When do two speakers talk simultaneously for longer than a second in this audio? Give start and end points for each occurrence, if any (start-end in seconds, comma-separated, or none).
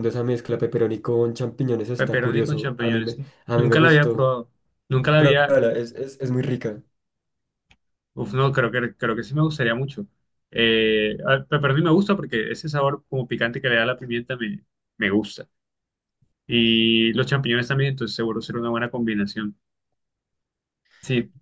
1.9-4.3